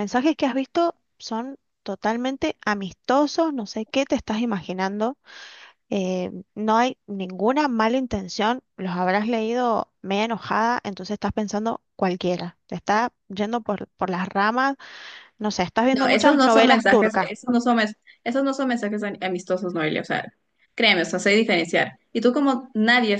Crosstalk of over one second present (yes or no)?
yes